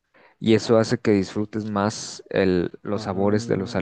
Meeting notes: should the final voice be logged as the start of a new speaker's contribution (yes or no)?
no